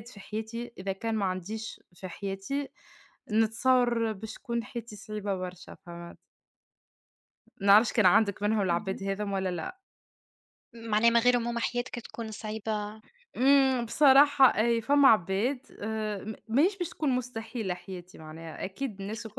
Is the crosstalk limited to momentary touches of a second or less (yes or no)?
yes